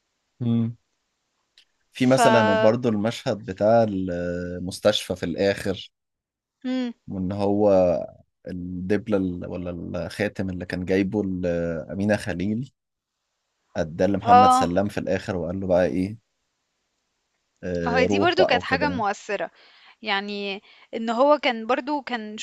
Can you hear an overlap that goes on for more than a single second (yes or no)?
yes